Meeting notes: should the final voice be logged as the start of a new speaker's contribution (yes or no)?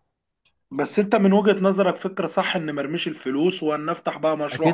yes